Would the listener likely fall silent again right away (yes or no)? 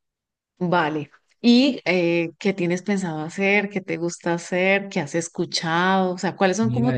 yes